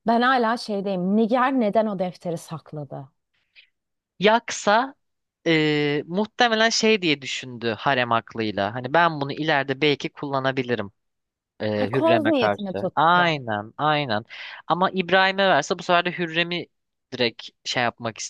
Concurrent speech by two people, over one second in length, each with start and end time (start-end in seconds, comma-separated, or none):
12.0-13.3